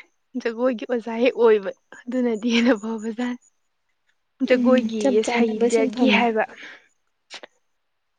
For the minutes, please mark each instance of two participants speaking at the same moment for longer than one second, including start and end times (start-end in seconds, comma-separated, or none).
4.5-6.3